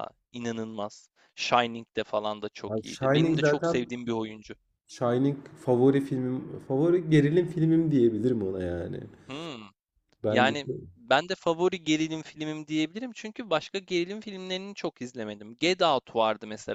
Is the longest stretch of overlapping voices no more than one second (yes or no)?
no